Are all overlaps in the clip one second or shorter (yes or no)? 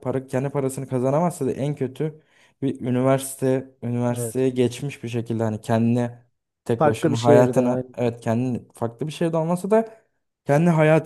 no